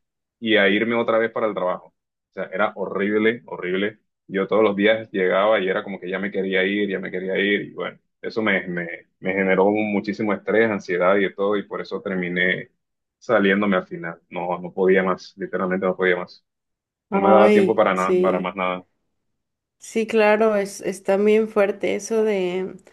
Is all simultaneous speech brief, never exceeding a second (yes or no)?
no